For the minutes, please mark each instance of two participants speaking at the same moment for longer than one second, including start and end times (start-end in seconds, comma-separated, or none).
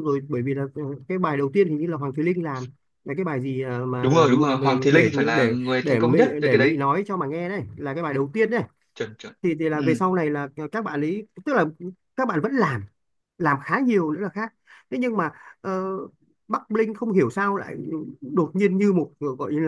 4.0-6.8